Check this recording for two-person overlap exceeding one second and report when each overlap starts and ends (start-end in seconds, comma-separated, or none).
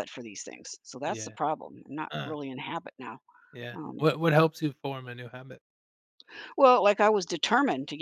none